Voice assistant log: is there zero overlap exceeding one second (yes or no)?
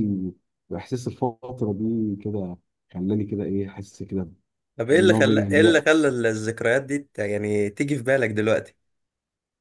no